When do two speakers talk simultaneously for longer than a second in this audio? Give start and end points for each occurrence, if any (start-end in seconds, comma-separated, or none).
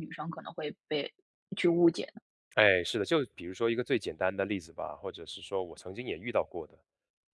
none